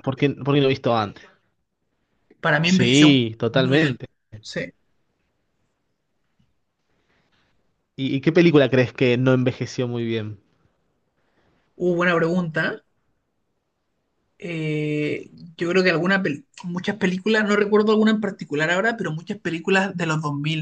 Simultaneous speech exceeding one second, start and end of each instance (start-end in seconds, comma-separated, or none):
2.6-4.0